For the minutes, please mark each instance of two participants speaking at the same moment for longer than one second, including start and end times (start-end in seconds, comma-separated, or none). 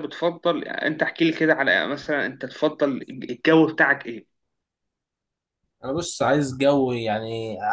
none